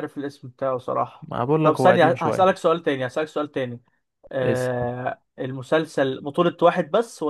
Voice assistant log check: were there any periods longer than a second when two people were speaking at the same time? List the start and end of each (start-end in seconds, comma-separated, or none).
1.2-2.6